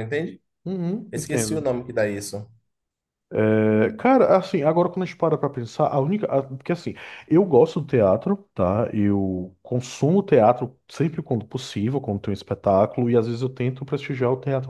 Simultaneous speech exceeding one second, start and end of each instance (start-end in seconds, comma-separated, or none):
none